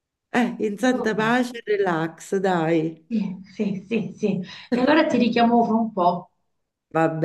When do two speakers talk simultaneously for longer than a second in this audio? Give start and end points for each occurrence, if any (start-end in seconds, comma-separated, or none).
none